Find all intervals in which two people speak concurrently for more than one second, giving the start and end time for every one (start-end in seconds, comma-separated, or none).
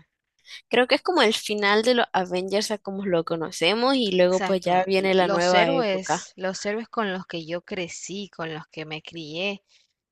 4.2-6.3